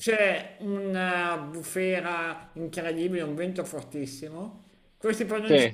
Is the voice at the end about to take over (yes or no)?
no